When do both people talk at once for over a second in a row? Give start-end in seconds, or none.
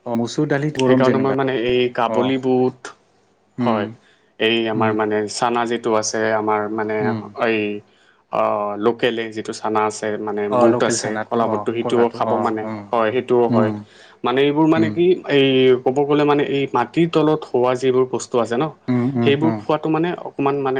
none